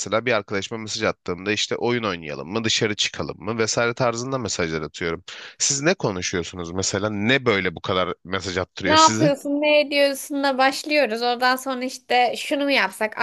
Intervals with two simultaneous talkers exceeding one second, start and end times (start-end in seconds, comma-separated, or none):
none